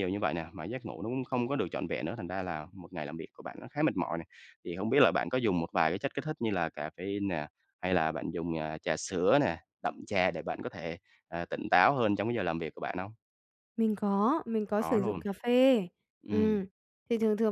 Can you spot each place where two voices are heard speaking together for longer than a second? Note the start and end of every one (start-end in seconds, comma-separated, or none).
none